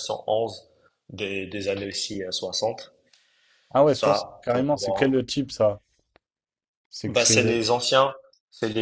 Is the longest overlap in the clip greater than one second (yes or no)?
yes